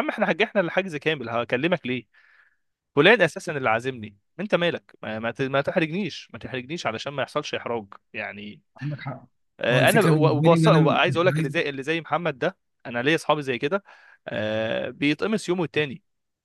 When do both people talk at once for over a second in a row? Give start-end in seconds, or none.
9.7-11.5